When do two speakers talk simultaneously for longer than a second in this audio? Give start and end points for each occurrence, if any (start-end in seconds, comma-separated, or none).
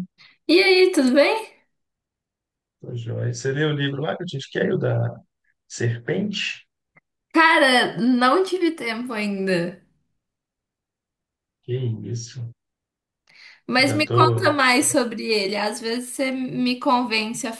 13.8-15.1